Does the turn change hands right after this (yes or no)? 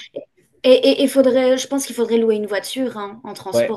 yes